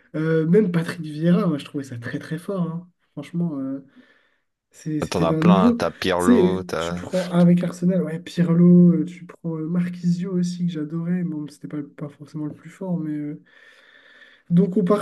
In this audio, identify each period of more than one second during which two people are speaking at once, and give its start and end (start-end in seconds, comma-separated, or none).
5.1-7.1